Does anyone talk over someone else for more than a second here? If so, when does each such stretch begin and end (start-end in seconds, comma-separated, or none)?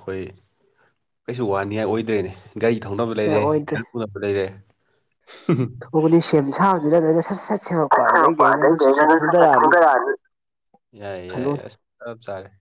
7.9-9.7